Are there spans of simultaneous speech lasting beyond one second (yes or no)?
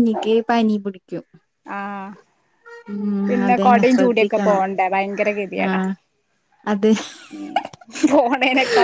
yes